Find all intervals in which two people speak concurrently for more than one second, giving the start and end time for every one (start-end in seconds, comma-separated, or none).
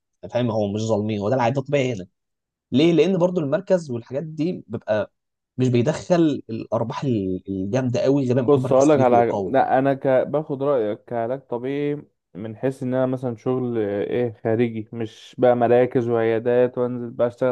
8.4-9.7